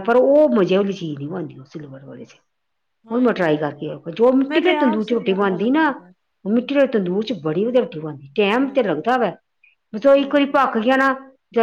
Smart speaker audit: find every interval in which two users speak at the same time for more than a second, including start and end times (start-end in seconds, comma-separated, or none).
4.5-5.9